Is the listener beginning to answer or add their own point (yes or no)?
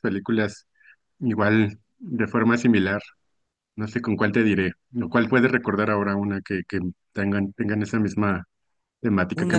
yes